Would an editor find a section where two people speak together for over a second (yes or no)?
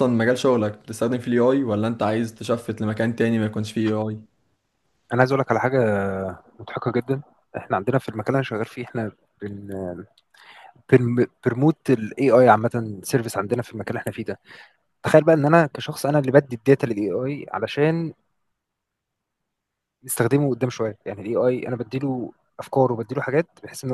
no